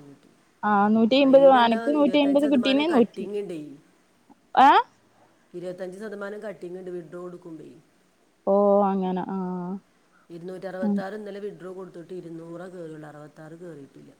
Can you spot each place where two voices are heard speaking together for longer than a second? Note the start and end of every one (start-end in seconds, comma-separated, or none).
1.3-3.2